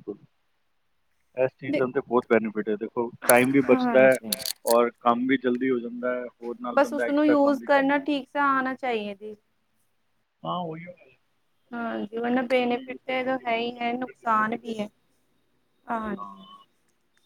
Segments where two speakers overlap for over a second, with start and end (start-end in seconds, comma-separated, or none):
12.0-14.8